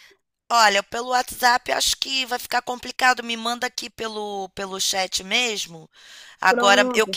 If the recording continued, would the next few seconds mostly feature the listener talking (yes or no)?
no